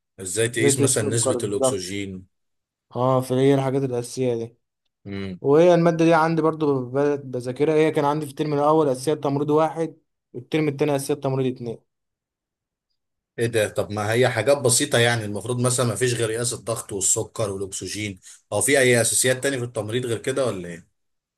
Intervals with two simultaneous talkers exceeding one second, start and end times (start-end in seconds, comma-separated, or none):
0.6-1.9